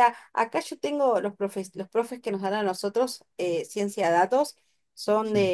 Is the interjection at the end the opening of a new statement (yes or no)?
no